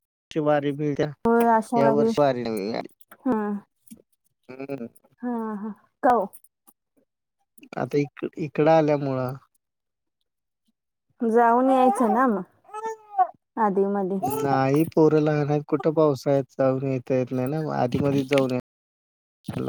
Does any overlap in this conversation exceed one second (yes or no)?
no